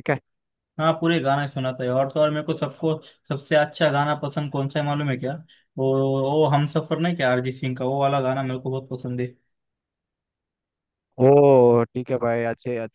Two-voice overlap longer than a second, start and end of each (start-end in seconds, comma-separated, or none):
none